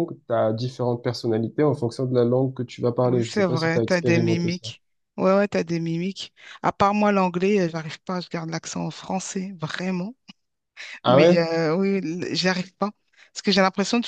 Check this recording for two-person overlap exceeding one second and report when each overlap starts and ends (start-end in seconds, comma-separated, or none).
3.0-4.7